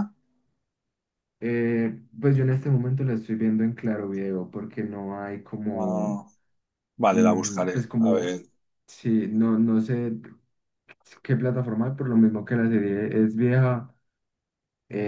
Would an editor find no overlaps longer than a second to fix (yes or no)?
no